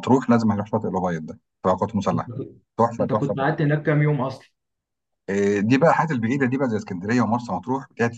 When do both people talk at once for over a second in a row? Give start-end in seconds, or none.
none